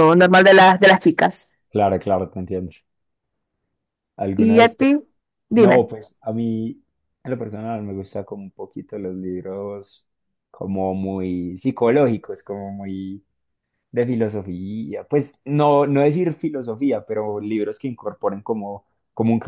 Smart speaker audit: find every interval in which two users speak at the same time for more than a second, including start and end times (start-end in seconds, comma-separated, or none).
none